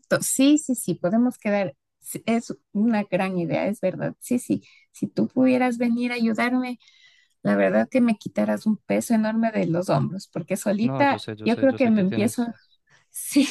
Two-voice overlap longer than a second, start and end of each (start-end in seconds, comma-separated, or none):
10.8-12.4